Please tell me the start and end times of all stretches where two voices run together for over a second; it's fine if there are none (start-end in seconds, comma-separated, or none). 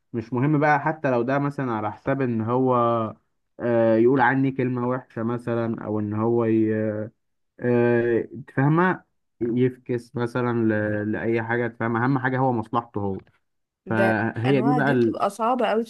13.9-15.3